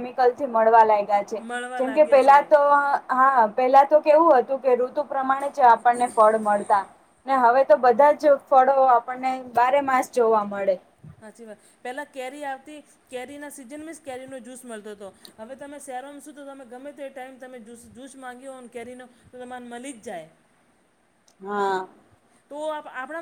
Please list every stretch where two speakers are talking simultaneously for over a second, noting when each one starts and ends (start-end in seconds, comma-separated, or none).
none